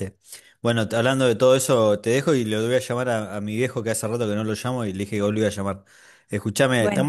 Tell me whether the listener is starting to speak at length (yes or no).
no